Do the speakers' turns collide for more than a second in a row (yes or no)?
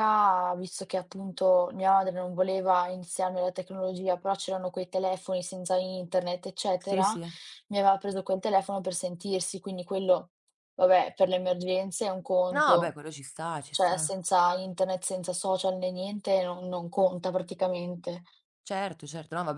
no